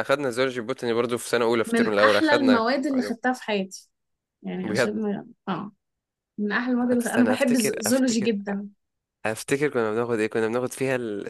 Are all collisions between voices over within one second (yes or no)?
no